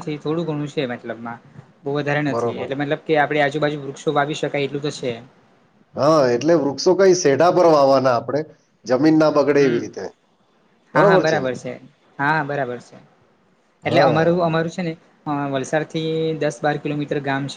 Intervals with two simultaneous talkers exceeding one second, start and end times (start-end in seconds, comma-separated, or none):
none